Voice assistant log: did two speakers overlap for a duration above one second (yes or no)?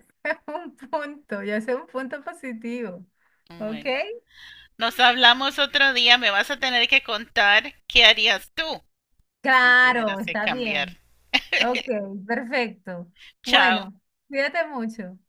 yes